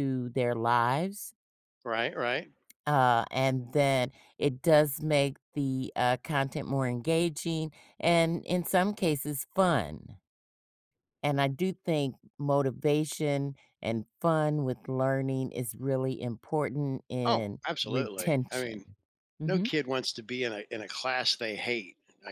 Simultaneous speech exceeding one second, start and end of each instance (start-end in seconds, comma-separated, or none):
17.2-18.9